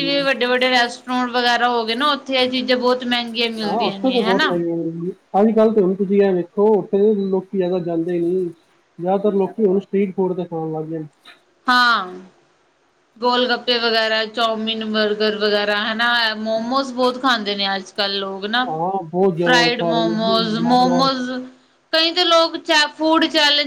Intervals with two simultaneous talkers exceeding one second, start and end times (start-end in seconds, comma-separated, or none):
19.4-21.1